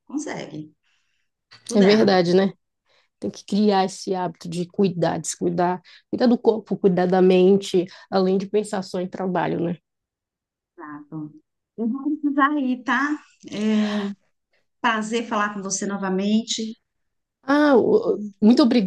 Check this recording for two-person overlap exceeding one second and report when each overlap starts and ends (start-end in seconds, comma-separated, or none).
none